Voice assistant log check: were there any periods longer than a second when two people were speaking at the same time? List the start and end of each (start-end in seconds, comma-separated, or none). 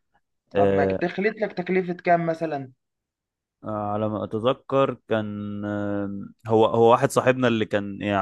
none